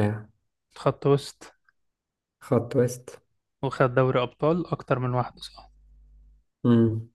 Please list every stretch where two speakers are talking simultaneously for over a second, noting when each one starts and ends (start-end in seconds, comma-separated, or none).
none